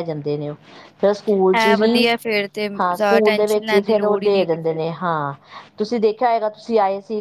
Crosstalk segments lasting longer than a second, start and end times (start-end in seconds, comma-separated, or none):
2.8-4.8